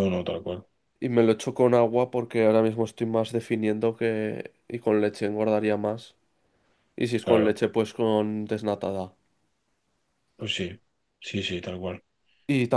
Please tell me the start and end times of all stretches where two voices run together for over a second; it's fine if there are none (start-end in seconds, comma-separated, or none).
none